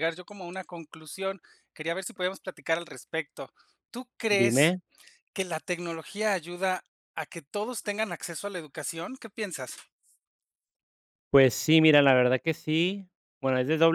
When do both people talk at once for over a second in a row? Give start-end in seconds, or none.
none